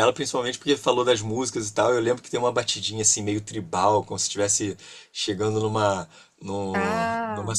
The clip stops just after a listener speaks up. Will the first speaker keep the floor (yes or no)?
yes